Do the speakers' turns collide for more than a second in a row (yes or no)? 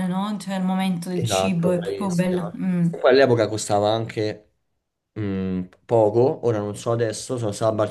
yes